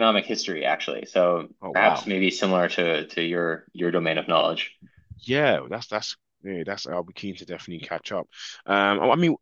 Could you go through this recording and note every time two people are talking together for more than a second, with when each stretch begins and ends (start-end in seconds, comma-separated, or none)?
none